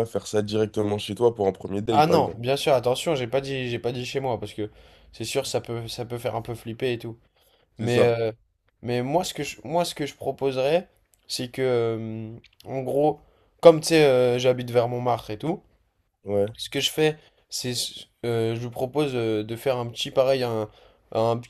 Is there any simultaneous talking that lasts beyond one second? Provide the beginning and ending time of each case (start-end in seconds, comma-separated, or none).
none